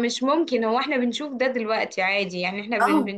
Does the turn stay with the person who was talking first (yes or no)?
yes